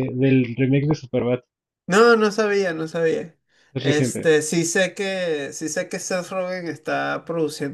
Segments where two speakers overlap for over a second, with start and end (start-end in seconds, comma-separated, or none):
none